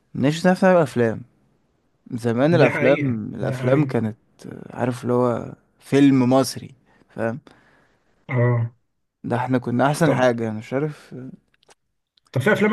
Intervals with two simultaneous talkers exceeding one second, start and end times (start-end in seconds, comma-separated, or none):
2.5-3.9